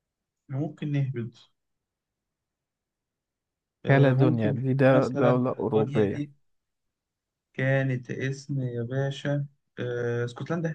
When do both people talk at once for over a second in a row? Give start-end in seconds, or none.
3.9-6.2